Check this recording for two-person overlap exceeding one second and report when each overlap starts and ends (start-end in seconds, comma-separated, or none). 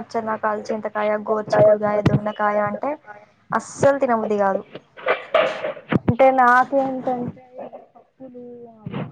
1.3-2.9